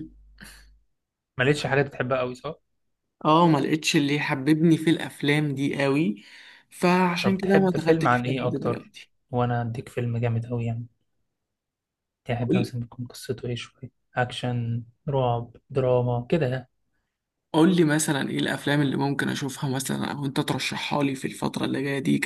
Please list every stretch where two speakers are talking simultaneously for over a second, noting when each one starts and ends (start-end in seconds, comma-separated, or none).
7.2-8.9